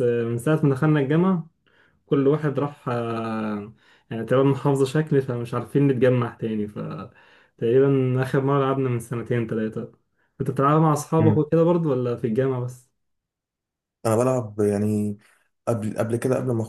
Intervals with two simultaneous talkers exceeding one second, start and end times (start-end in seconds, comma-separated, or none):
none